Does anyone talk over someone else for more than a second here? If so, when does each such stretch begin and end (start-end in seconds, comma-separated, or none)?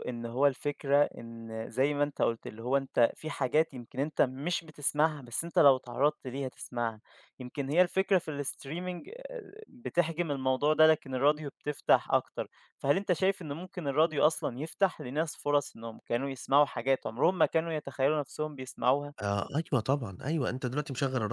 none